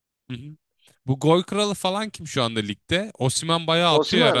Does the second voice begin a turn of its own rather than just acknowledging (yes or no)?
yes